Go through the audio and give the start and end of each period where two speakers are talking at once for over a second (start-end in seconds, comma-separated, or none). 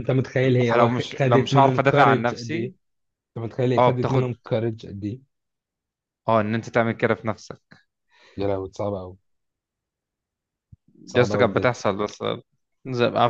0.8-2.7